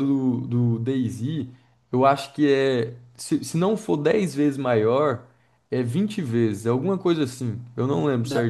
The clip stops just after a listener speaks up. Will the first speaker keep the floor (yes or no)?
no